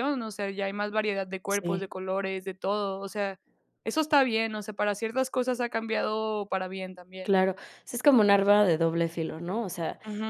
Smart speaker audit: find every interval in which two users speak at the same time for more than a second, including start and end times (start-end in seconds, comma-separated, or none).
none